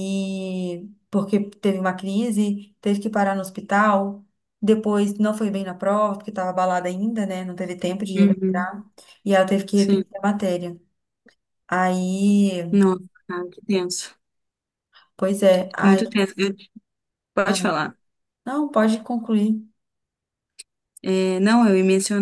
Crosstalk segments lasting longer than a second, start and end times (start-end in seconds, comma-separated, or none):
none